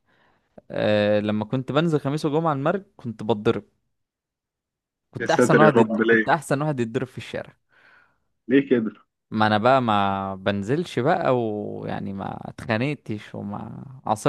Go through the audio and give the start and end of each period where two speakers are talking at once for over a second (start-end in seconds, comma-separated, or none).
5.2-6.4